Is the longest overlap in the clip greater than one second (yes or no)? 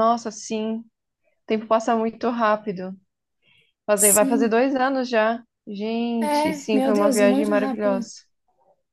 yes